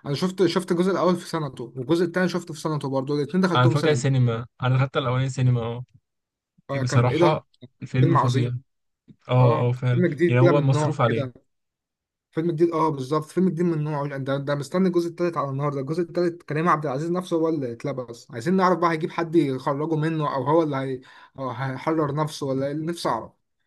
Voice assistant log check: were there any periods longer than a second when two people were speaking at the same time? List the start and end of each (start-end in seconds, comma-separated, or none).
9.4-11.3